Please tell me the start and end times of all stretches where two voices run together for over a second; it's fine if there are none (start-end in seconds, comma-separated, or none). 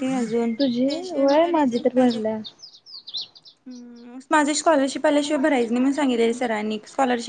0.6-2.3